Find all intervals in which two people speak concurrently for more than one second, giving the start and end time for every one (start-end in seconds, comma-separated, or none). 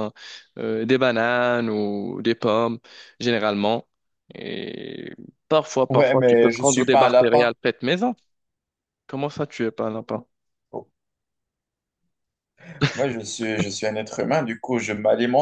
5.9-7.5